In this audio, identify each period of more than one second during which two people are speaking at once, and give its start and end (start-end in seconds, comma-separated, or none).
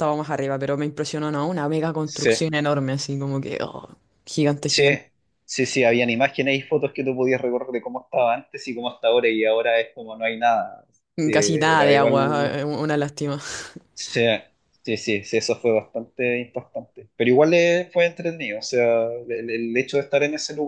11.3-12.6